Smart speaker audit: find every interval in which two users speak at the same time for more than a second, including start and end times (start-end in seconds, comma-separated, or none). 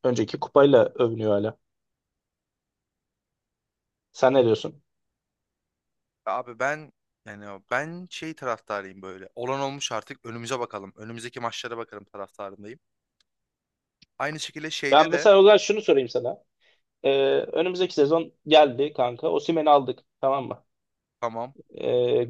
none